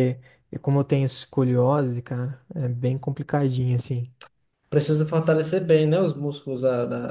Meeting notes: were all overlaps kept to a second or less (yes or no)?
yes